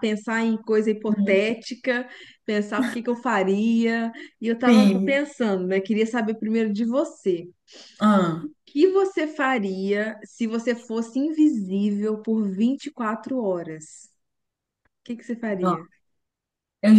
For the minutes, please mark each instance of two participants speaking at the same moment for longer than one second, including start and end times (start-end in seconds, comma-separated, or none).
none